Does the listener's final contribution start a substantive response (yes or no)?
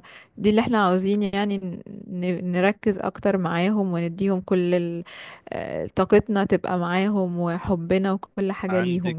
yes